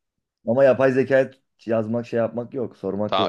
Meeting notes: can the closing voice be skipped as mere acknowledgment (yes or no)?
no